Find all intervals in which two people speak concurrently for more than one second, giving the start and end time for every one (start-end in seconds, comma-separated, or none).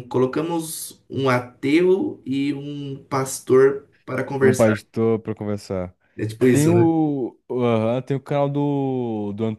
none